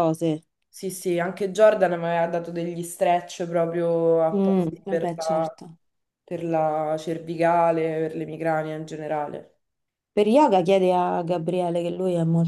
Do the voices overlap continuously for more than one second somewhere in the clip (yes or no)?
yes